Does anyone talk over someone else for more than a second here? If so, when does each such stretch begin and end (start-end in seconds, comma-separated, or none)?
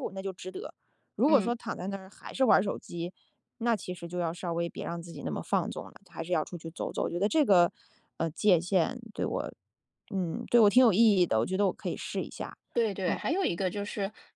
none